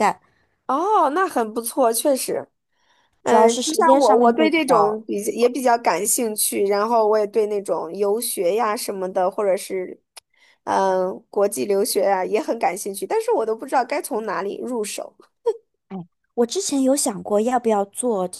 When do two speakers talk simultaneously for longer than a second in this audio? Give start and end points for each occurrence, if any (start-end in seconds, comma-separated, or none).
3.2-5.0